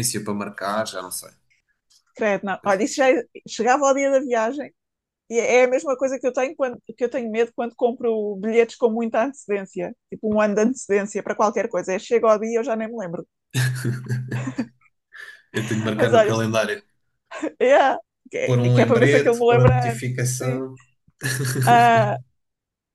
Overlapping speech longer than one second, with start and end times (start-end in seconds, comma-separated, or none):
18.4-20.6